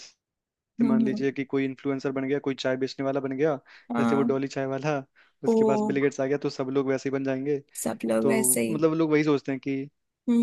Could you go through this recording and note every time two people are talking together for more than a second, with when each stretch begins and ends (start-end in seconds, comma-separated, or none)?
none